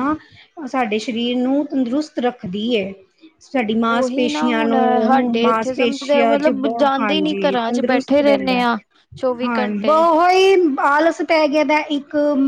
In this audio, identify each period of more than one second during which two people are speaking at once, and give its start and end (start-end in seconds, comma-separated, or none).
4.0-8.6